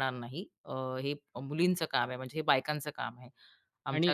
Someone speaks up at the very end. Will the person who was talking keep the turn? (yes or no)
no